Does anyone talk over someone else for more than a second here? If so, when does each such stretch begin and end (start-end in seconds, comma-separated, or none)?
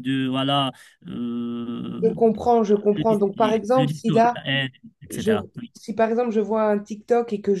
3.0-4.4